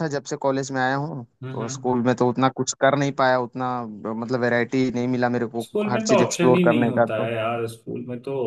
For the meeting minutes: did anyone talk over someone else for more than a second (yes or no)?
yes